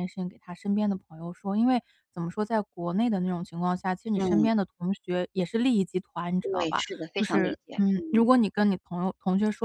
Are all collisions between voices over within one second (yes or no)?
no